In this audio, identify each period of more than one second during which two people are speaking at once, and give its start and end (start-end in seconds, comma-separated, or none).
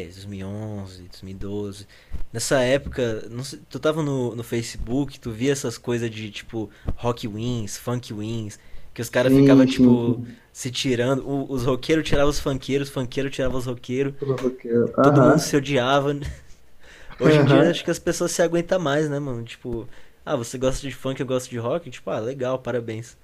9.1-10.4